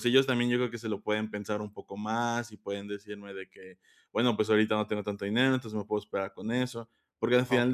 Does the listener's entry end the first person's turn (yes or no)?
no